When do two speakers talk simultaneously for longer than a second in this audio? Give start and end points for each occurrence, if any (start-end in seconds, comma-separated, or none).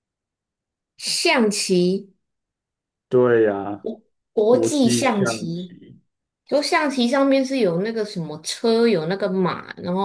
4.5-5.8